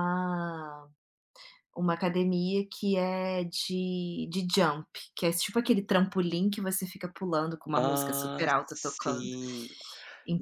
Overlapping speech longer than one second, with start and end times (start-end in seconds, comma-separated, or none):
7.7-9.3